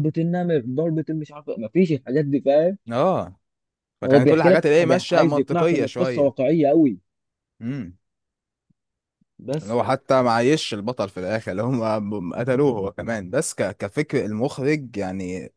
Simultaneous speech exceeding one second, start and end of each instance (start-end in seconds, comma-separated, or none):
4.0-6.3